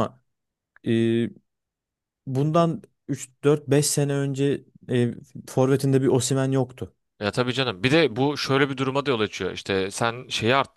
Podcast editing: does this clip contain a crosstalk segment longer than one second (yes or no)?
no